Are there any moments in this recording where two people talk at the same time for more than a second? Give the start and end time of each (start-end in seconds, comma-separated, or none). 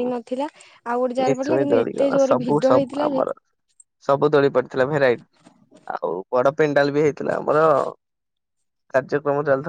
1.2-3.2